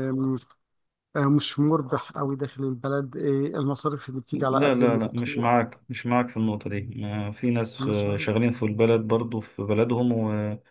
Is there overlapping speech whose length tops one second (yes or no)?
yes